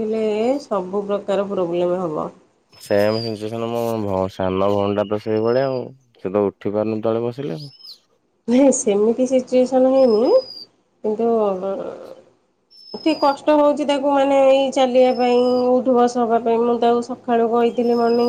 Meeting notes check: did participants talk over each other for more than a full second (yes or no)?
no